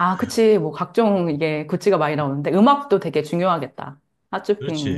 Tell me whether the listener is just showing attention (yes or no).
no